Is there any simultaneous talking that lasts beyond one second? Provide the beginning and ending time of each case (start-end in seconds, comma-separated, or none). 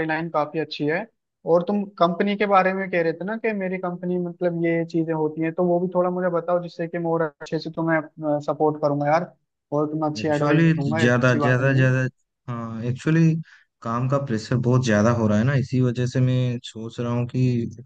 10.2-11.9